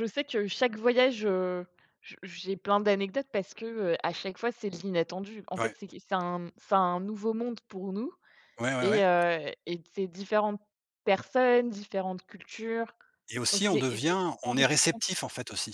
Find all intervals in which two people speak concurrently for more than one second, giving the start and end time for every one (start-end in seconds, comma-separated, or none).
13.5-15.0